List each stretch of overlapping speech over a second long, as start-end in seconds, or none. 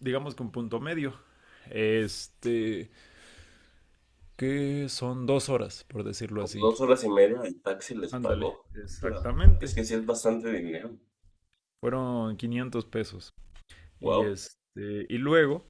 8.1-9.8